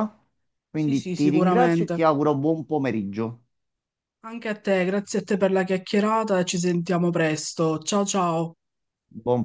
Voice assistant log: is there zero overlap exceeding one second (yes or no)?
no